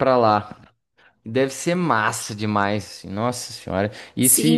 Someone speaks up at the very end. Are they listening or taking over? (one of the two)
taking over